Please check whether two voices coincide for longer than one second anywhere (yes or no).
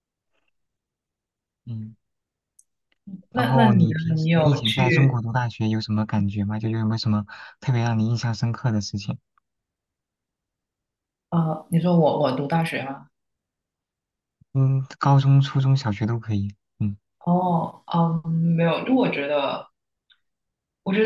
yes